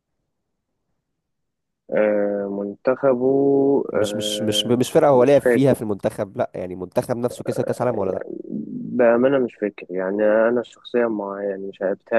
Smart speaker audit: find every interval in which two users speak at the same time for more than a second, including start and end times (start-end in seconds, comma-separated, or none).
4.0-5.8